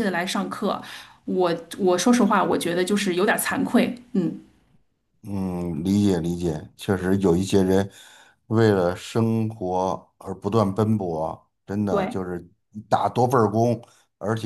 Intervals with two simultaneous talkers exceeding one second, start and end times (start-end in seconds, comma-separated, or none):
none